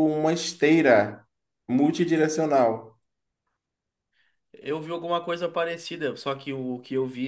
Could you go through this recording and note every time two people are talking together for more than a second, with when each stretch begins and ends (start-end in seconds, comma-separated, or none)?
none